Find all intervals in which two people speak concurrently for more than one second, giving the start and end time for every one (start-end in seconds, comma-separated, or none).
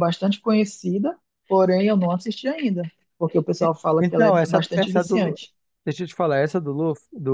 3.6-5.4